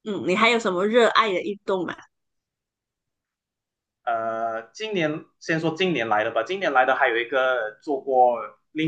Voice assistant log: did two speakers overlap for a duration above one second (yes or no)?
no